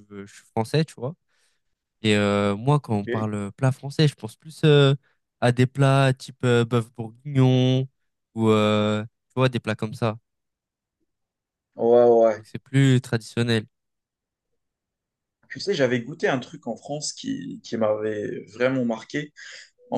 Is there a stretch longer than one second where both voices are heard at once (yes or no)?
no